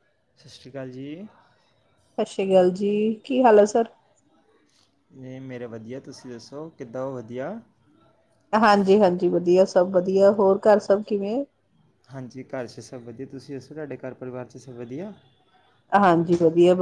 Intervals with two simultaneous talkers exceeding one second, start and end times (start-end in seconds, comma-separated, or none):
none